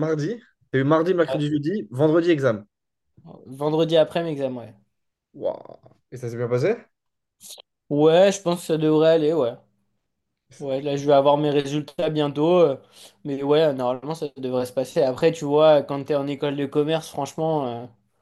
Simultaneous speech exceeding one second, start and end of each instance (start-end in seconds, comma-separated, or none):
none